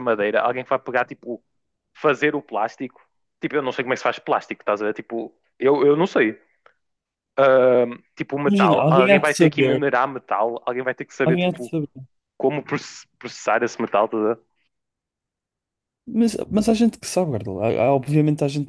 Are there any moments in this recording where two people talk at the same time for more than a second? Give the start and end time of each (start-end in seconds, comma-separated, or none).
8.4-9.8